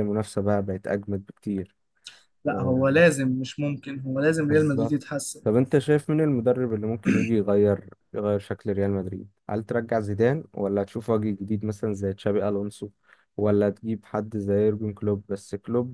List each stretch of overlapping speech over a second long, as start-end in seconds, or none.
none